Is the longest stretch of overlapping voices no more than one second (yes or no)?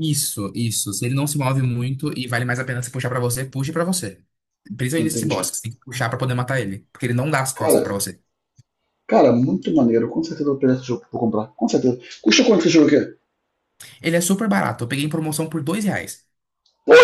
yes